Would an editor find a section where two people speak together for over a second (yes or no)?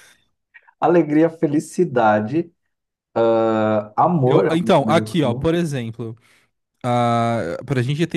yes